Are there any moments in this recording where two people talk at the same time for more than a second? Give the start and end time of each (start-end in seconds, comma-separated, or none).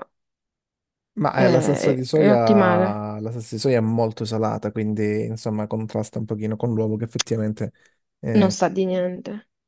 1.3-3.0